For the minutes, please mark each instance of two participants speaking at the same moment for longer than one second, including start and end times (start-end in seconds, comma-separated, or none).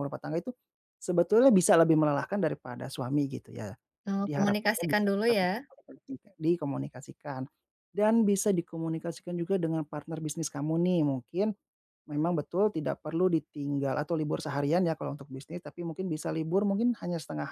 4.2-5.6